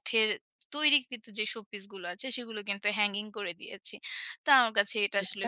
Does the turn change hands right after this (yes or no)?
no